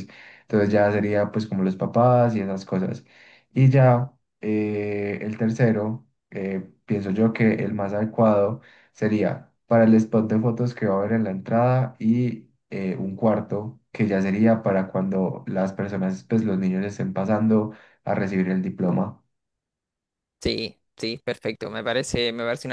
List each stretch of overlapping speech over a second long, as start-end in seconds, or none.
none